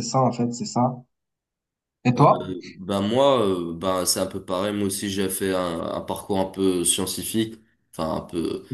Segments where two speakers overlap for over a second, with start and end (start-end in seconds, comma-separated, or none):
none